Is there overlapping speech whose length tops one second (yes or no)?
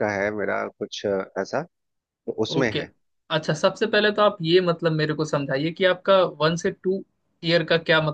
no